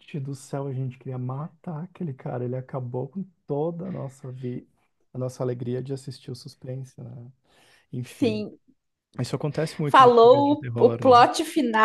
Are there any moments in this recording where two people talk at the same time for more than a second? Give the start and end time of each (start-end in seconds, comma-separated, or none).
9.8-11.2